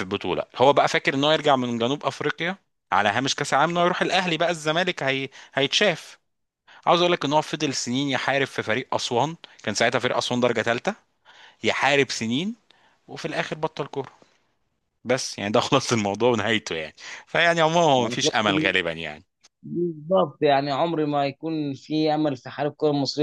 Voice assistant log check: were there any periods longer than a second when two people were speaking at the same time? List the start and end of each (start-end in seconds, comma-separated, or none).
none